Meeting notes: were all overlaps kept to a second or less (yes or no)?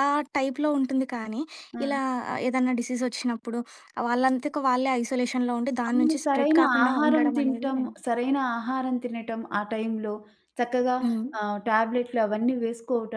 no